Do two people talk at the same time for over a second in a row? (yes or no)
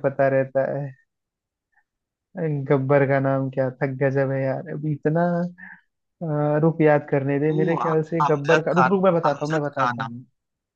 yes